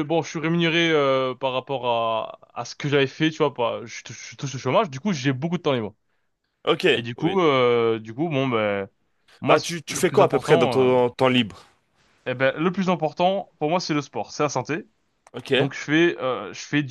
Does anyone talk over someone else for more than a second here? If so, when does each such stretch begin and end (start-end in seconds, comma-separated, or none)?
9.5-10.9